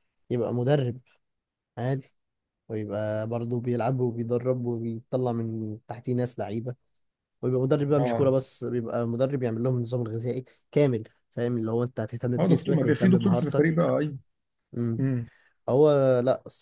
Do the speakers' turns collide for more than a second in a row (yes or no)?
yes